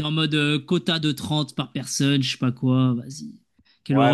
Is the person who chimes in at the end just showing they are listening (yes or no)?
no